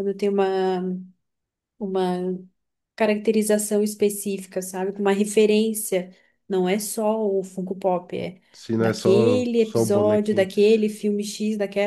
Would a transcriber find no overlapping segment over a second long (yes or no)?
no